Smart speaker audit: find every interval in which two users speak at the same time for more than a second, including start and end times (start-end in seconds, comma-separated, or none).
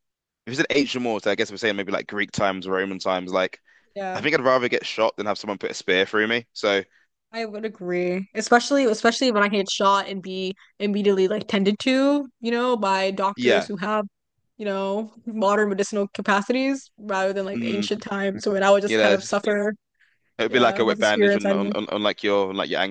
20.5-21.7